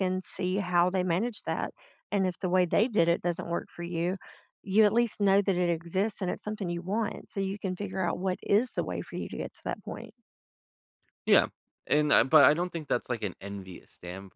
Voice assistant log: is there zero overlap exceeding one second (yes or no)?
yes